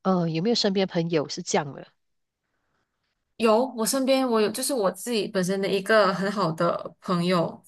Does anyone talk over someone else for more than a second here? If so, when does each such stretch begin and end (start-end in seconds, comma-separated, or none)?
none